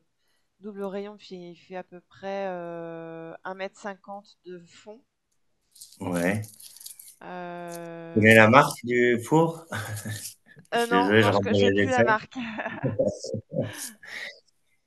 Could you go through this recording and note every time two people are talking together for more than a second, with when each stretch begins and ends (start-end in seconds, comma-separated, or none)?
10.7-12.1